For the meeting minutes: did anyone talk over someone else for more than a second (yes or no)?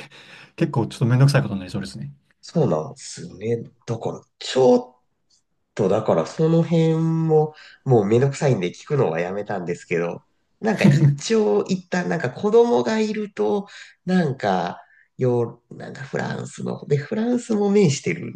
no